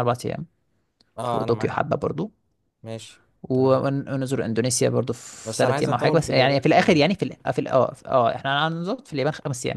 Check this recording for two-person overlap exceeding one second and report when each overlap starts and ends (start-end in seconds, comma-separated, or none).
5.4-7.0